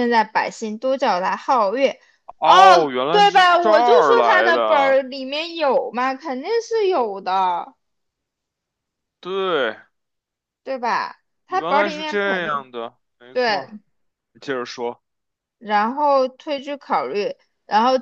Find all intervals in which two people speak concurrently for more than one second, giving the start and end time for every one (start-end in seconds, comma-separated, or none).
2.4-5.0, 11.5-12.7